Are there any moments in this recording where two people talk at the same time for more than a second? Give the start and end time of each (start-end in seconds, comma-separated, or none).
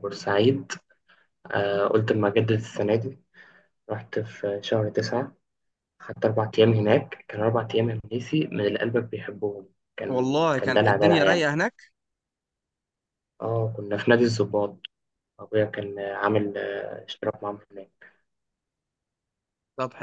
10.1-11.5